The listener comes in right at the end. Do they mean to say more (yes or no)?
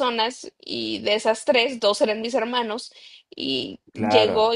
yes